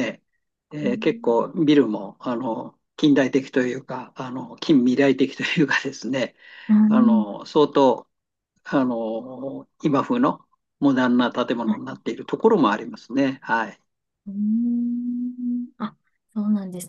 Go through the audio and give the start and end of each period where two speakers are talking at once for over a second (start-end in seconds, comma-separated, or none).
none